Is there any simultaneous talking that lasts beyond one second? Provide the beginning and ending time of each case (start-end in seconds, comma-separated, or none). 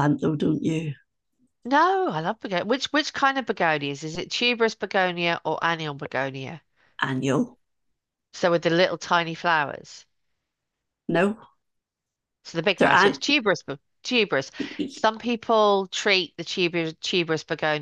none